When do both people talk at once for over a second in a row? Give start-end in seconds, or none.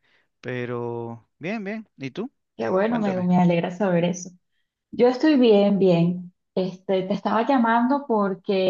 none